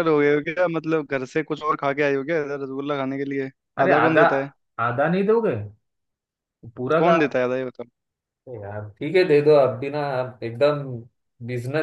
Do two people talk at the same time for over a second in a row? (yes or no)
no